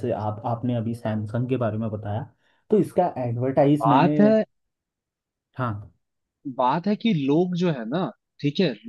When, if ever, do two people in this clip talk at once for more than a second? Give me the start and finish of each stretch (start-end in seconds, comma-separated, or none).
none